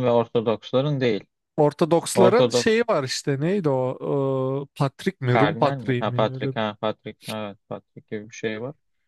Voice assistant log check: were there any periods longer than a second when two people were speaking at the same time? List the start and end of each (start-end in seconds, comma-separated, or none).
5.3-6.5